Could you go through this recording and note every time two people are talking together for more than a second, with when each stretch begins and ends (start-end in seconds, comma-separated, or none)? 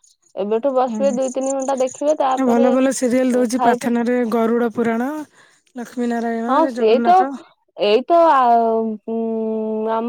0.9-2.7